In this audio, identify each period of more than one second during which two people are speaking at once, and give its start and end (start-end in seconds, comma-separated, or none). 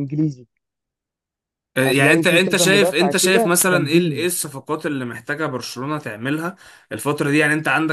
1.8-4.3